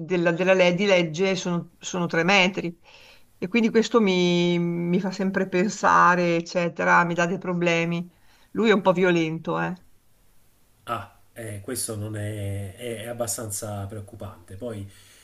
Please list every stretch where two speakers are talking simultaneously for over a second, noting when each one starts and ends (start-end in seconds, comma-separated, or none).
none